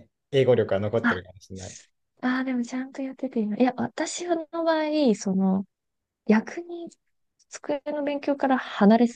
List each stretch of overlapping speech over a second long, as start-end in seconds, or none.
none